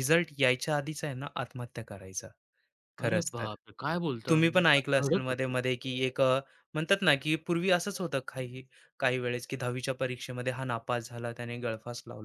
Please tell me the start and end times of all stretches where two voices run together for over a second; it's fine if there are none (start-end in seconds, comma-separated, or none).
4.3-5.5